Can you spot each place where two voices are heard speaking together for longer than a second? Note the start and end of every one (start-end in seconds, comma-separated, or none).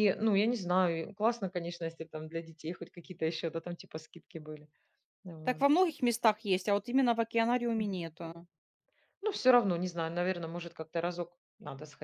none